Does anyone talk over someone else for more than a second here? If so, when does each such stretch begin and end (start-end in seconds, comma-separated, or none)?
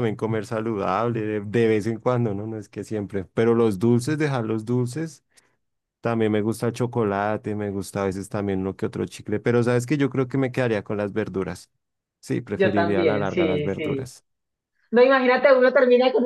12.5-14.1